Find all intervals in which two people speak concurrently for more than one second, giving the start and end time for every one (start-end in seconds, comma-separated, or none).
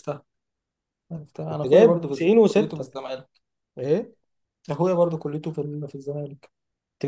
1.5-2.9